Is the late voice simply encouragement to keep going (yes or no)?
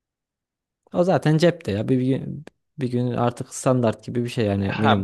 no